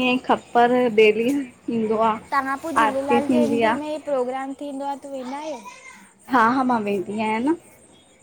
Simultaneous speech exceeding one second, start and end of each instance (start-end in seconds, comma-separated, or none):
none